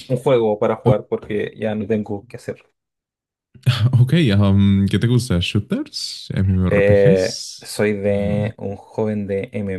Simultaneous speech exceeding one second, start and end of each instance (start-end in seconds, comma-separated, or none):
6.7-8.3